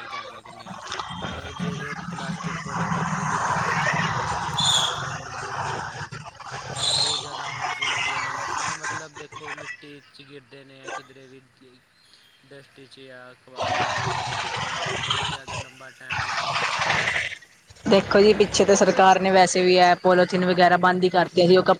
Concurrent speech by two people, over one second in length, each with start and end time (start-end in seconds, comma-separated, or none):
18.2-19.4